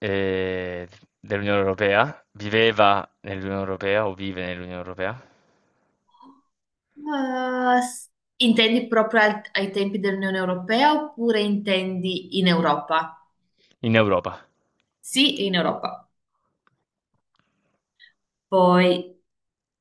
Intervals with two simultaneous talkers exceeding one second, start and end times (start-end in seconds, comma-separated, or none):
none